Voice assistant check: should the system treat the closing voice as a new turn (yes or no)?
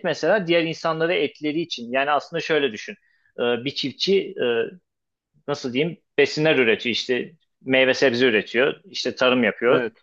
no